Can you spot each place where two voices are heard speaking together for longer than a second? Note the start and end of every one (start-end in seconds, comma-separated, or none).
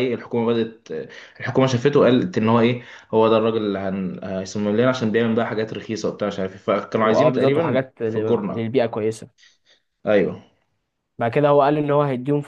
7.0-8.6